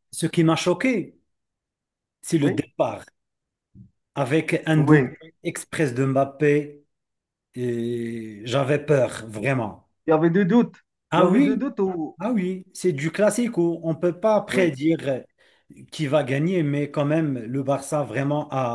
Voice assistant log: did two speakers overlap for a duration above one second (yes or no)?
no